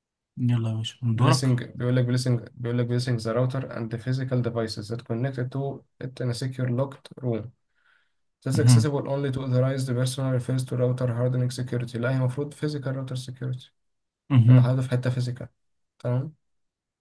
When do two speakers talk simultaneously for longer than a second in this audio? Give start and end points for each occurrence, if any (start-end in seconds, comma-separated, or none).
none